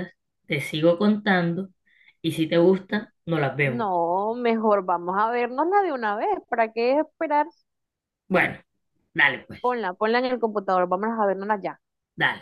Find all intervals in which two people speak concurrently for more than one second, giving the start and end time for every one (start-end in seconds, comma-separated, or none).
none